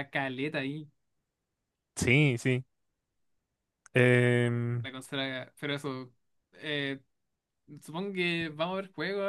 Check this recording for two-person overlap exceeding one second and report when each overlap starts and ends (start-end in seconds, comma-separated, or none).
none